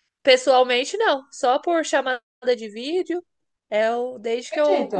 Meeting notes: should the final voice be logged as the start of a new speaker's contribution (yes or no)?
no